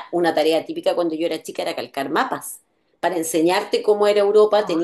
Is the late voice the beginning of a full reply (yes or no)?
no